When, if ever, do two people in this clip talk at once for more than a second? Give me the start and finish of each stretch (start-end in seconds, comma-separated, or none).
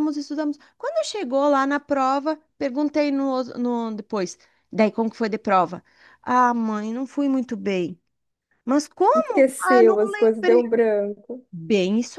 9.2-10.8